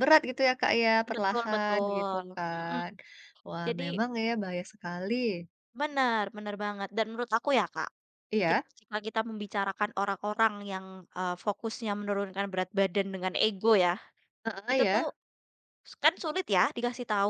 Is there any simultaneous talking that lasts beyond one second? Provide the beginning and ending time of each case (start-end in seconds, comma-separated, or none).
1.1-2.8